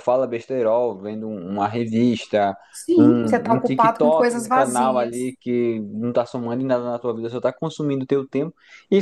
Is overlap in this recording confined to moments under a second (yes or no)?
no